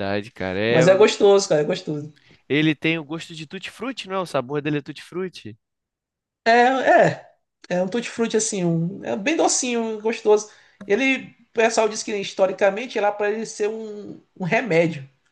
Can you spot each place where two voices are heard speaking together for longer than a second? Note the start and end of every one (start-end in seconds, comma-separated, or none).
none